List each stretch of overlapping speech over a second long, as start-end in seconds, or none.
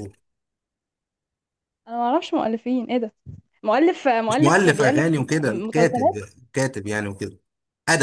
4.3-6.2